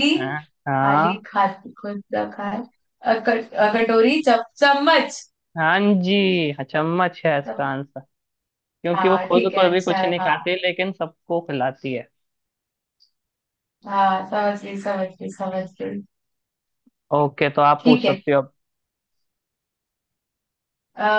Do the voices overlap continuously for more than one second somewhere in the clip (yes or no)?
yes